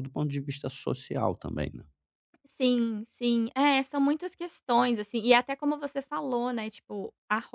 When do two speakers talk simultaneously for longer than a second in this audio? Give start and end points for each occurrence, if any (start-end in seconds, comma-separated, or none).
none